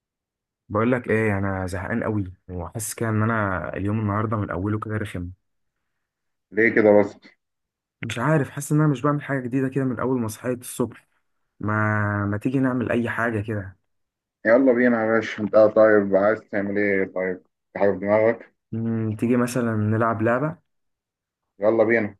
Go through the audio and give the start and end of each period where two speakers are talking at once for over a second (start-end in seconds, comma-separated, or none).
none